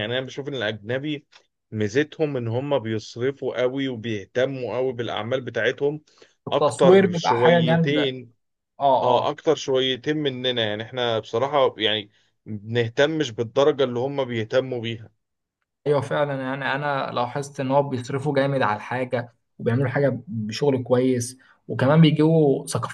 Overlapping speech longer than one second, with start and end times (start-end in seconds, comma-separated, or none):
6.5-8.1